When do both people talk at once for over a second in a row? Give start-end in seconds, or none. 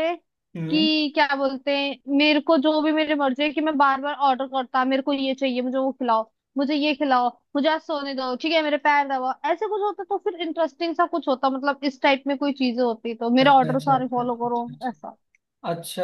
13.4-15.2